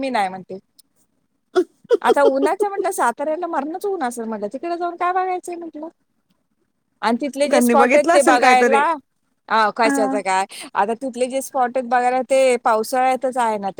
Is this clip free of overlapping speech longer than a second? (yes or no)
no